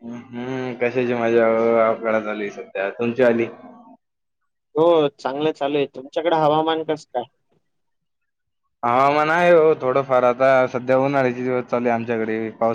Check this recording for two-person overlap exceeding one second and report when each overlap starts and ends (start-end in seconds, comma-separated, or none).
none